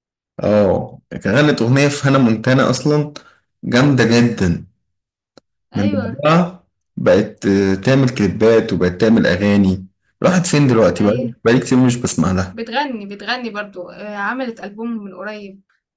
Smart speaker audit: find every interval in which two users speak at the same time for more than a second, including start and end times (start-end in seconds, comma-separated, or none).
none